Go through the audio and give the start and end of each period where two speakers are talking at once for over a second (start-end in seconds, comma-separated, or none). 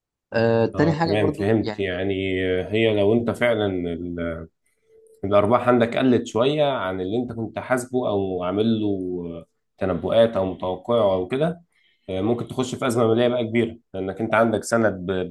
0.7-1.9